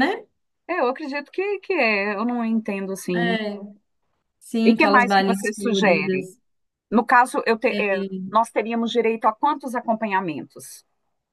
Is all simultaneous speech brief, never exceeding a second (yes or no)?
no